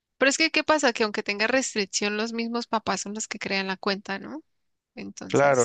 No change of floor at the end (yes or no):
no